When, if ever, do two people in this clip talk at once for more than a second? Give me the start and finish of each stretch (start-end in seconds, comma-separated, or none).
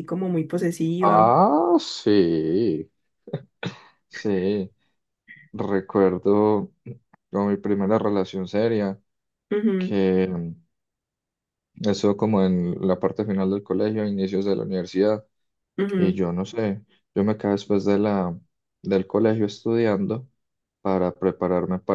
none